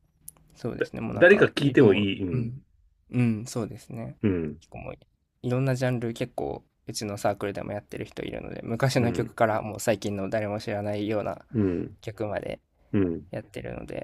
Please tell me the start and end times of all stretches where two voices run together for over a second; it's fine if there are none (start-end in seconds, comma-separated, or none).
0.7-2.6